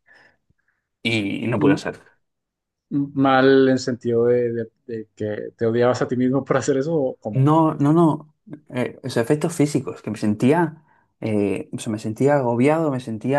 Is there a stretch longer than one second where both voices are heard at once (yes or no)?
no